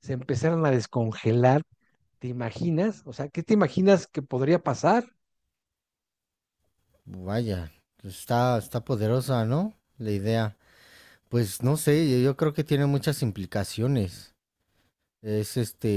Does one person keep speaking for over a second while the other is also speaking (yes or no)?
no